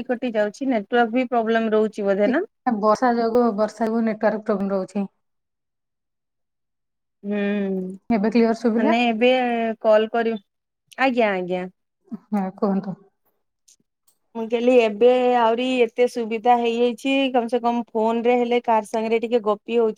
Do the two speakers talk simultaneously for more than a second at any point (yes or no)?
no